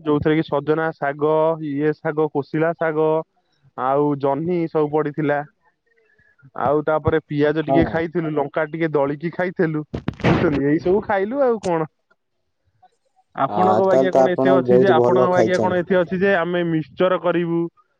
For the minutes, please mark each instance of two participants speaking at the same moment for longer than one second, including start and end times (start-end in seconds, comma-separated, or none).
13.5-15.8